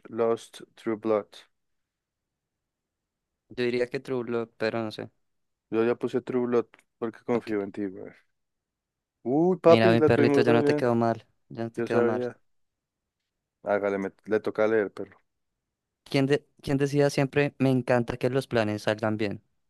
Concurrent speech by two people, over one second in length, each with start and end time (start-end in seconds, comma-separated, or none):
9.6-10.9